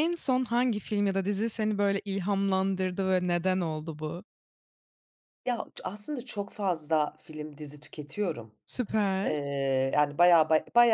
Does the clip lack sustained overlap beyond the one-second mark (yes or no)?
yes